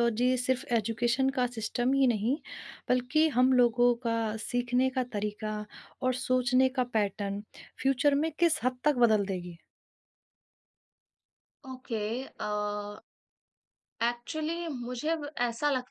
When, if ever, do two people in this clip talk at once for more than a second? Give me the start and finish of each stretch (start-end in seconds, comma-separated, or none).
none